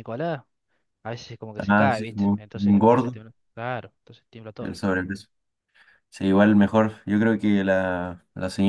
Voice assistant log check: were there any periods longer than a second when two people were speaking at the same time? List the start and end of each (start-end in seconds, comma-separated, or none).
1.6-3.2